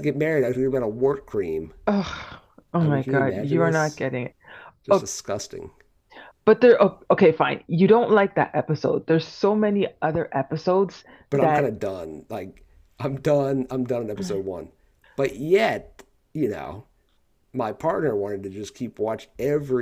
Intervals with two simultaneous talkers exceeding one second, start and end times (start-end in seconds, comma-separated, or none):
2.8-4.0